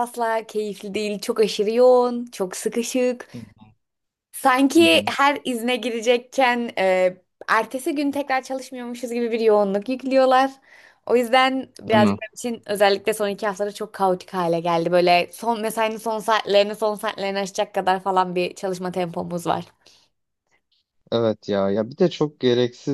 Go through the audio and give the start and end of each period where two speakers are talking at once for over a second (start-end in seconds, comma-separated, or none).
none